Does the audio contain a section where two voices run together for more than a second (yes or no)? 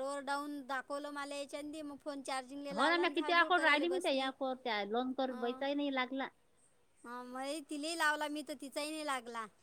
yes